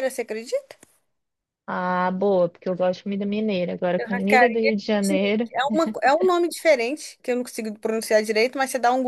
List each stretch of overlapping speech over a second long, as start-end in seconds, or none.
4.0-5.5